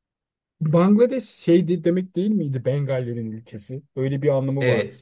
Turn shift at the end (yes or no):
yes